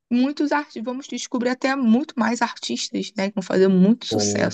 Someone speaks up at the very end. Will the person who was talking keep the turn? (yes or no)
no